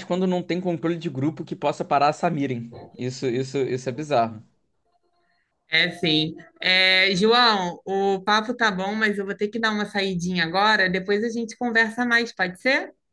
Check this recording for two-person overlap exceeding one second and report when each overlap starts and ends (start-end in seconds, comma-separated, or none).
none